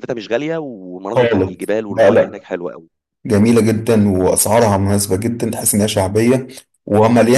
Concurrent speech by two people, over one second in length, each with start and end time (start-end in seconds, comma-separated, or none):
1.1-2.4